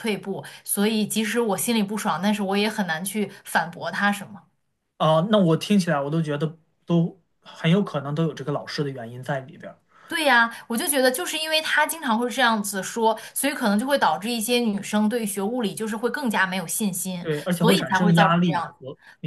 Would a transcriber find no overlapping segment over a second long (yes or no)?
no